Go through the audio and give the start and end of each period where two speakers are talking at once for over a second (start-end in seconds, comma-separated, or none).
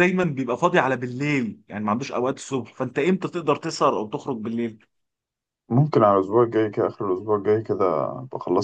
none